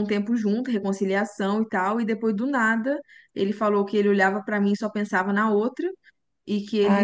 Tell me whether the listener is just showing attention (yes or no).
yes